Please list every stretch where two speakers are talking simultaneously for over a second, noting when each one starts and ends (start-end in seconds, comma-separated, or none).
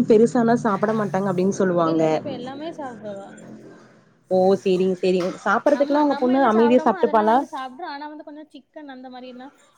5.8-7.4